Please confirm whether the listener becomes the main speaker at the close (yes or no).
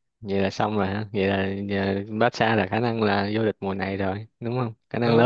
yes